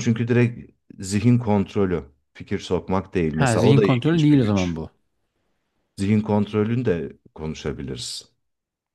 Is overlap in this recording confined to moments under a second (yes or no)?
no